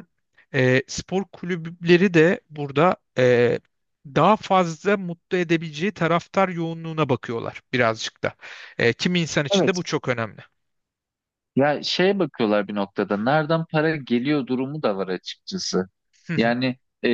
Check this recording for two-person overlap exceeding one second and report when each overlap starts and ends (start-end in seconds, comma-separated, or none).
none